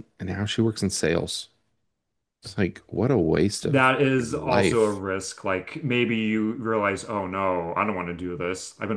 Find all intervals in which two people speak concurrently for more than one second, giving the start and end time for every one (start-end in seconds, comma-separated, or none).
3.6-5.0